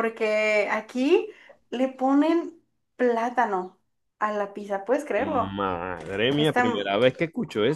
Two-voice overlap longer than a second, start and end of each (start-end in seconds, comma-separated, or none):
none